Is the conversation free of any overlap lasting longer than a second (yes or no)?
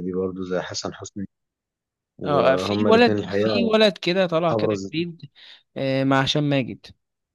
no